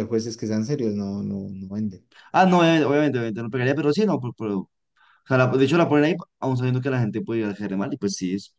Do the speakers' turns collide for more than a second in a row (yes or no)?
no